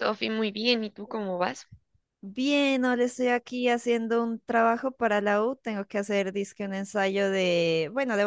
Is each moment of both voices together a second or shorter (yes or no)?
yes